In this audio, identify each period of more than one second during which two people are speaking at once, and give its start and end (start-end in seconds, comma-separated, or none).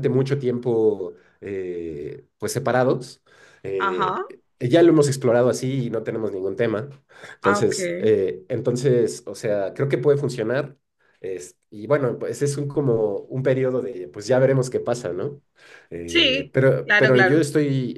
16.1-17.5